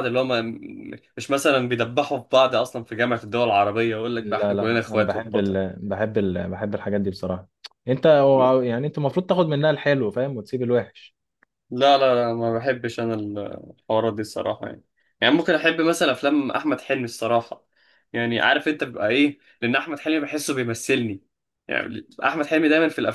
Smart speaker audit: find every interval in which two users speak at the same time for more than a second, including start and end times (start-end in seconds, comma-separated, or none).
4.2-5.5